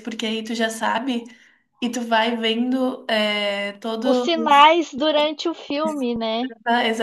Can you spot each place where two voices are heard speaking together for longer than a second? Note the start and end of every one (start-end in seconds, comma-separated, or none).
none